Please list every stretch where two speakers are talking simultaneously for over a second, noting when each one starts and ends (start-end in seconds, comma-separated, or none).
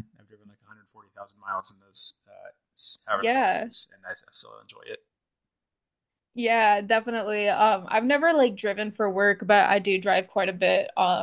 none